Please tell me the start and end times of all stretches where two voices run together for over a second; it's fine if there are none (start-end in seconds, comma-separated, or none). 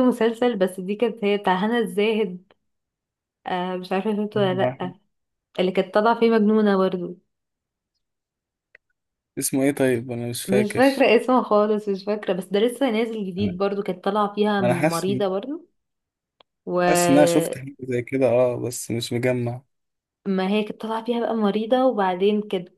none